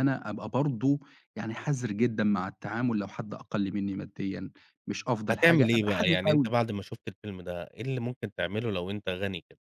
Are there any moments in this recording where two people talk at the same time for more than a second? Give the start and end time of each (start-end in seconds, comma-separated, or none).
5.3-6.5